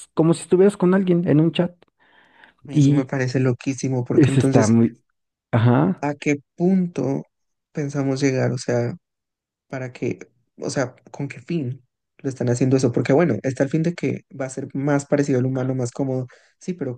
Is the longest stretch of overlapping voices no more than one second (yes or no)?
yes